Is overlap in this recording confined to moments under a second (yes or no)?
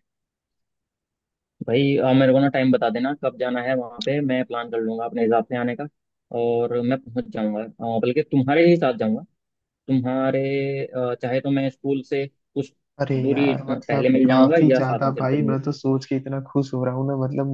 no